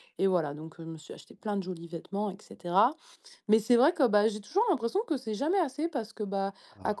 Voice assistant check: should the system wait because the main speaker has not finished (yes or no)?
yes